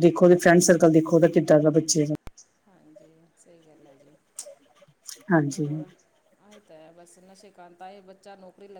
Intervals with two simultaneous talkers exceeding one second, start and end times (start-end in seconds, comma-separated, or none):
none